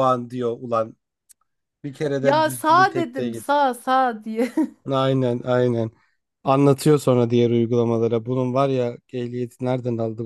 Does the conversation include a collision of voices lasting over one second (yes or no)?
yes